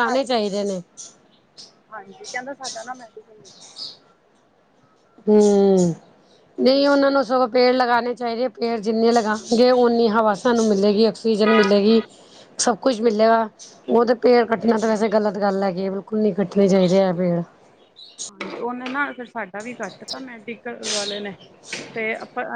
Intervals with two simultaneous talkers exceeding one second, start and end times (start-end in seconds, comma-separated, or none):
none